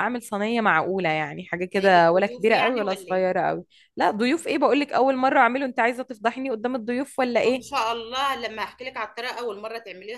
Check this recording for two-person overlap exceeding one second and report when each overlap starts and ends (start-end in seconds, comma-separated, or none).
1.8-3.2